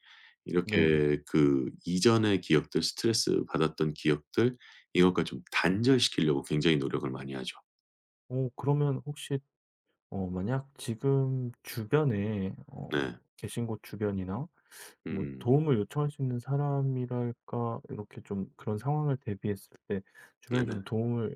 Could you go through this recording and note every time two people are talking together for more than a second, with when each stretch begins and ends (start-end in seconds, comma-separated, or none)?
none